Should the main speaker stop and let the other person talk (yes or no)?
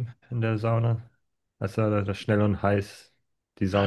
yes